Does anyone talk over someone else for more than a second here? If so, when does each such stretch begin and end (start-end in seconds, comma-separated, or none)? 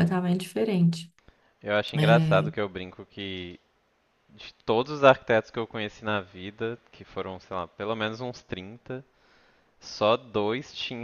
none